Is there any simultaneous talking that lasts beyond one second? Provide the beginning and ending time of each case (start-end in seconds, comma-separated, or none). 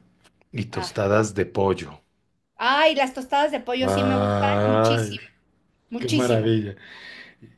3.8-5.2